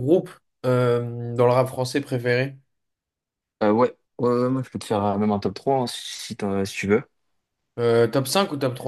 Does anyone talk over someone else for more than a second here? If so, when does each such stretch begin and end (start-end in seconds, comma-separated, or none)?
none